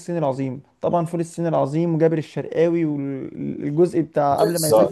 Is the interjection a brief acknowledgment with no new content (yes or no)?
no